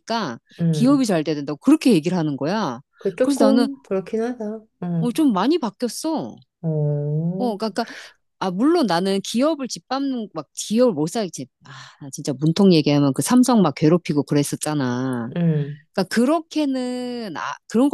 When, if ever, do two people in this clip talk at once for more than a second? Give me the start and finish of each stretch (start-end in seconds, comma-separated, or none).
none